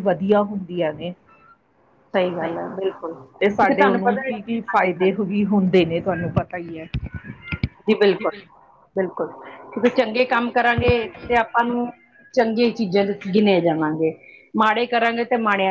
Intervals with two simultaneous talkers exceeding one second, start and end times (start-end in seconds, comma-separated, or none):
3.4-5.2